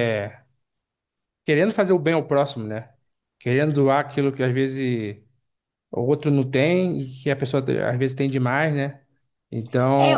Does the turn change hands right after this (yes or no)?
no